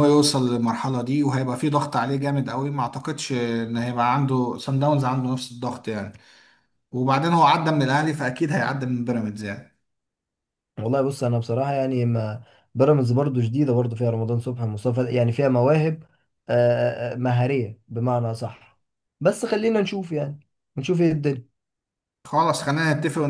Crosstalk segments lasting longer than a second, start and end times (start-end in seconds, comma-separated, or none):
none